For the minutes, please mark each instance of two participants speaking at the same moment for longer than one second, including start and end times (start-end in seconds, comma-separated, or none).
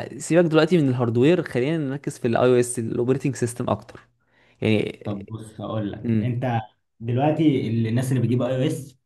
none